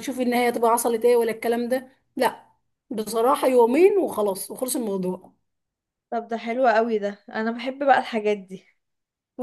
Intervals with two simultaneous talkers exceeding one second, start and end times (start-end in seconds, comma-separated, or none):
none